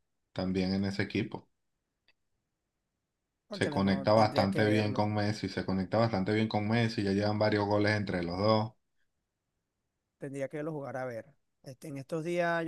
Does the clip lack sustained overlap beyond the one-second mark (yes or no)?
no